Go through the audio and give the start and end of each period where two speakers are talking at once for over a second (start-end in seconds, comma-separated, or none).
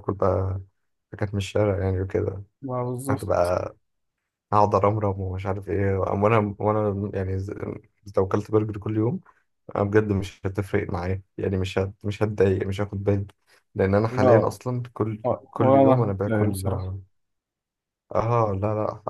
15.2-16.9